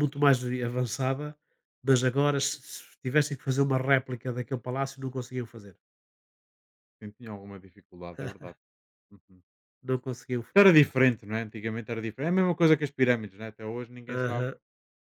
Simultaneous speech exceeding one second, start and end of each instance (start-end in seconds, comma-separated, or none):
none